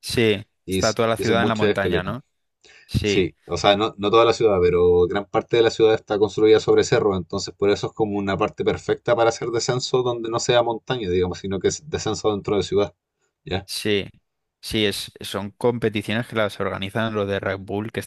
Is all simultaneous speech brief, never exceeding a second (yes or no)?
no